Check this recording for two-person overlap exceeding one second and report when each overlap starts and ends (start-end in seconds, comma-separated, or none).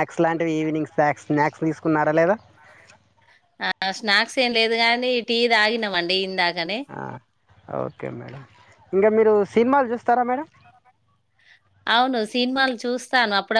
none